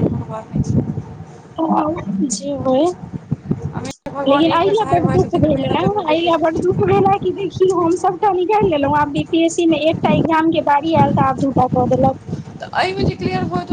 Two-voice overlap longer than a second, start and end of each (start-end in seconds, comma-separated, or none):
4.3-7.0